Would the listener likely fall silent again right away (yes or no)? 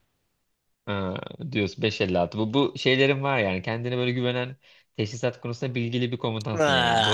no